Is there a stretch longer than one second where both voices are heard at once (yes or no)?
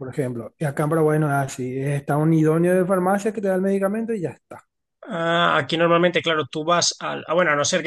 no